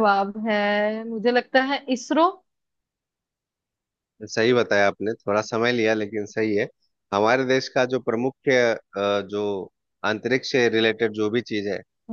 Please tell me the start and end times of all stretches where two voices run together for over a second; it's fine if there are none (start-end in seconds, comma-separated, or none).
none